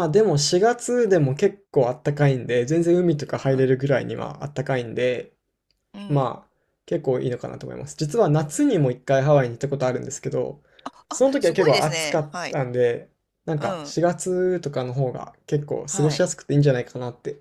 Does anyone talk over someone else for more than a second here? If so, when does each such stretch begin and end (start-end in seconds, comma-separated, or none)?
11.1-12.6